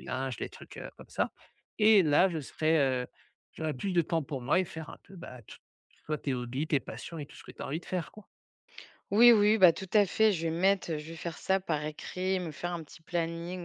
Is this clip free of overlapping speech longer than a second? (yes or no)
yes